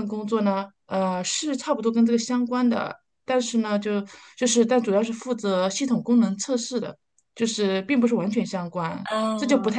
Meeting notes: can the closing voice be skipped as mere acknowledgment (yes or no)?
yes